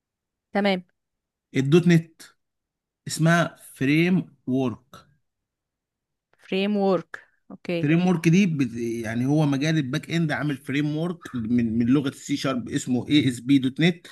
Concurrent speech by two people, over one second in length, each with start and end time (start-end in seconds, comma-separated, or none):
none